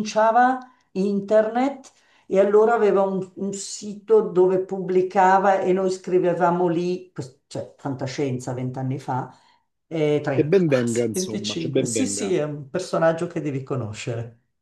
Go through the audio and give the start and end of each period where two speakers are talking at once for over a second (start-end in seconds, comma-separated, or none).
10.3-12.3